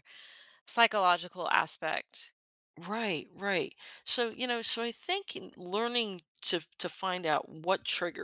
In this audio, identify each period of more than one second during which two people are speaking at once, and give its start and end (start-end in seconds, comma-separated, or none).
none